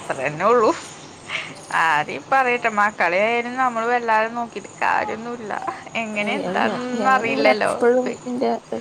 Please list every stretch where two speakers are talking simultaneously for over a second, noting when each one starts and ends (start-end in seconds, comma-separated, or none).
none